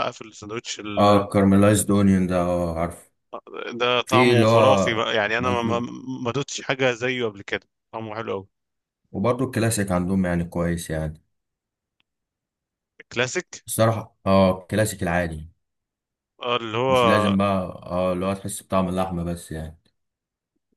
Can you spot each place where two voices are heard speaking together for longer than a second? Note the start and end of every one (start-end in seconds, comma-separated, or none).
none